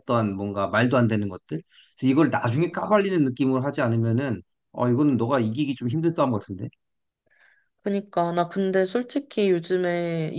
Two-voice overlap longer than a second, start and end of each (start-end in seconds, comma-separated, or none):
none